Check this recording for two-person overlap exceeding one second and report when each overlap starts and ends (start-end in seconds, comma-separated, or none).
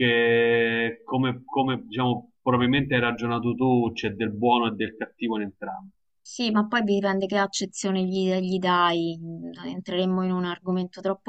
none